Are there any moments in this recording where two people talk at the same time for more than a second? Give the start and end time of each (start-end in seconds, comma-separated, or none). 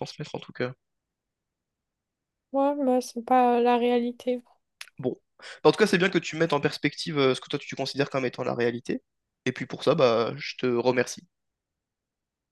none